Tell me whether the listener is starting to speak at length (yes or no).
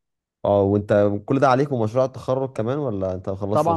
yes